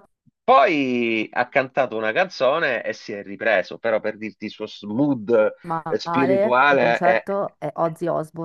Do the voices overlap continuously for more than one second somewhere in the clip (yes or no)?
yes